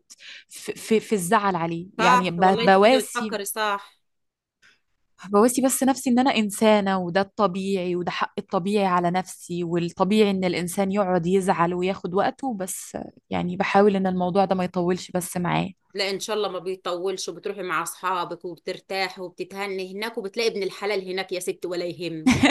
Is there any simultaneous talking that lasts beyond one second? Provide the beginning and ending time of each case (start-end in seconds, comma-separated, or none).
2.0-3.4